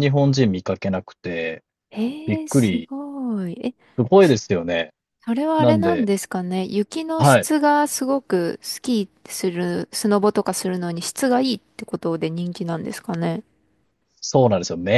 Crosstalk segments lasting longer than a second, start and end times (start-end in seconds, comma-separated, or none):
none